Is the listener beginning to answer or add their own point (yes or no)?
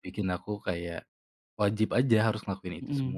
yes